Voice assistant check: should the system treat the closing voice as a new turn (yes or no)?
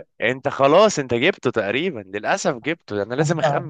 no